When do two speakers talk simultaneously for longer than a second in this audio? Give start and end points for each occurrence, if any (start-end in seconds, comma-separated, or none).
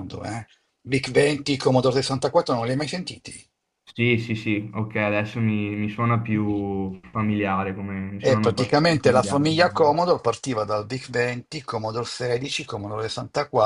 8.2-9.9